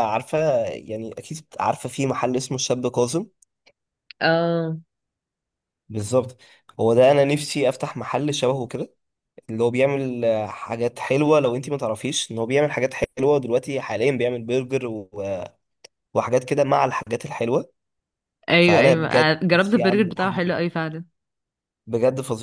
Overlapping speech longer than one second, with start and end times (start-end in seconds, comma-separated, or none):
18.6-20.4